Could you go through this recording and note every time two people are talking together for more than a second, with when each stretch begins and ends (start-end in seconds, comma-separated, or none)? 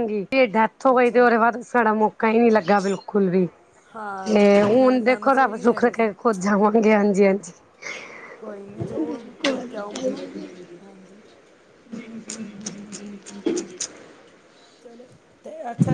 4.3-6.1